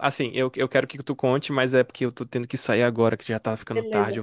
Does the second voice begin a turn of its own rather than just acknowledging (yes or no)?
yes